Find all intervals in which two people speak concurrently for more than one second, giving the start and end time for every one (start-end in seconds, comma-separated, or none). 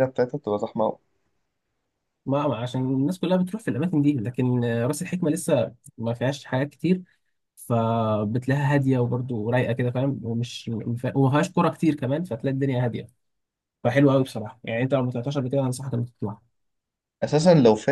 none